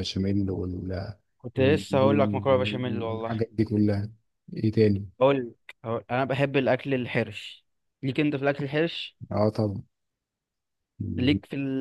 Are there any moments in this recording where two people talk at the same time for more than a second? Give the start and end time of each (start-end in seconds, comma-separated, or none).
1.6-3.4